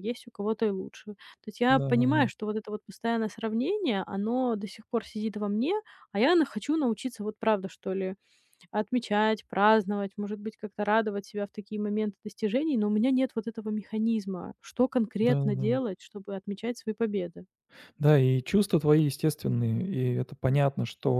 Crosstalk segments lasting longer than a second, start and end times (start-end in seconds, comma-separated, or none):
none